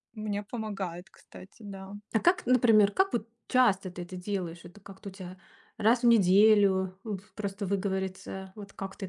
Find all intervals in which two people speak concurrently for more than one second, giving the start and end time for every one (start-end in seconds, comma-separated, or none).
none